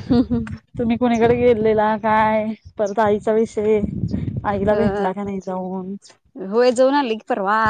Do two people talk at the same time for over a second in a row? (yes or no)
no